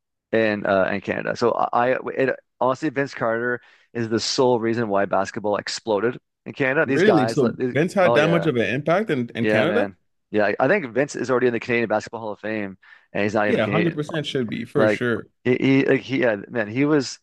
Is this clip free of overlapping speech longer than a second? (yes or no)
no